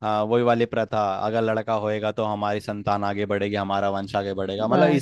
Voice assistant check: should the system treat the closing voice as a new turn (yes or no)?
no